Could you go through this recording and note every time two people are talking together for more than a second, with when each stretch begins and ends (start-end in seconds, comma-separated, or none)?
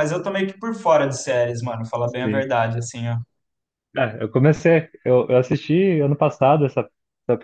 none